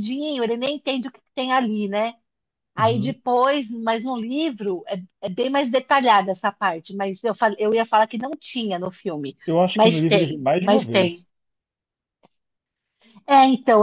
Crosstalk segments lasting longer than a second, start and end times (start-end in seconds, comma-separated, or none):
9.7-11.3